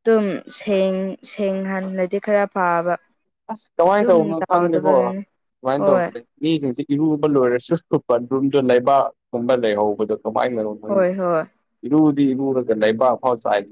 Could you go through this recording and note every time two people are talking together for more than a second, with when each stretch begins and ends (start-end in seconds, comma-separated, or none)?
none